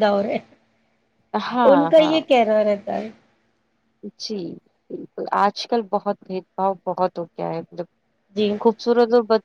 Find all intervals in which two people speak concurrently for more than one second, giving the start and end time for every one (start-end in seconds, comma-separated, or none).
none